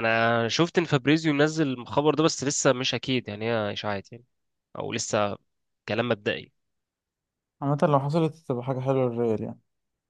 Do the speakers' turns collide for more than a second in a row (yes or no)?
no